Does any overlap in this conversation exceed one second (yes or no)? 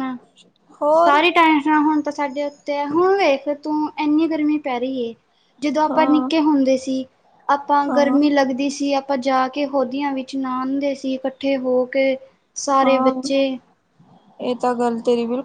no